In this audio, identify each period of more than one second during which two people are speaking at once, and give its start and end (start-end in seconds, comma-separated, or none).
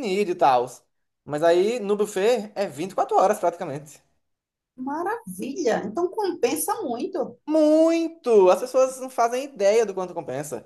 none